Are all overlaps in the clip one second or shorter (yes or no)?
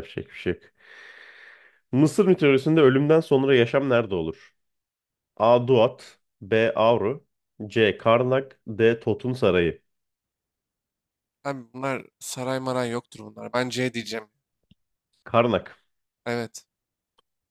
yes